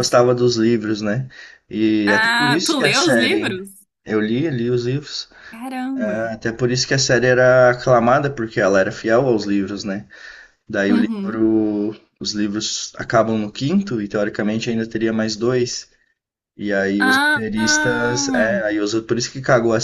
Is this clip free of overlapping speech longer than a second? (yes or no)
no